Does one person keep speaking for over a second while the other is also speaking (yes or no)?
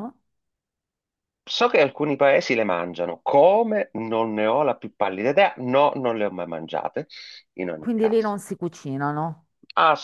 no